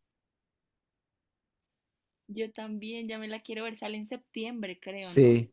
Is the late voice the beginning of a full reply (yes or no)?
yes